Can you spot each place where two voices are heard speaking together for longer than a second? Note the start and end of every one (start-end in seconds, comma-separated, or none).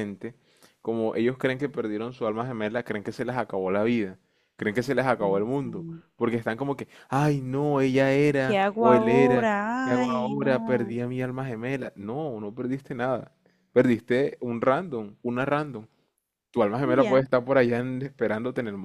8.4-11.0